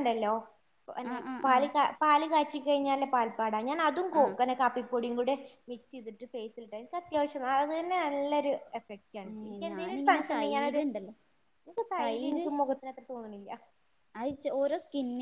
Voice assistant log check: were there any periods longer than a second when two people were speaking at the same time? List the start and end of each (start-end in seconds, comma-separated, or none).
9.1-10.8